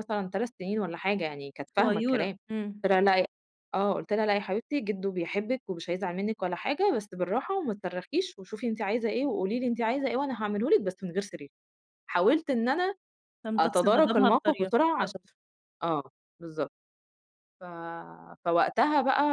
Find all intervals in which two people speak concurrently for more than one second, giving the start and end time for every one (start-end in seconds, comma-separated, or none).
13.6-15.2